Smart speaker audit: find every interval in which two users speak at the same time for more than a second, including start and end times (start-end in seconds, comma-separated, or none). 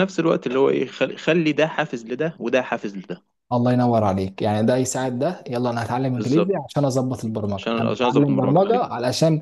7.6-8.8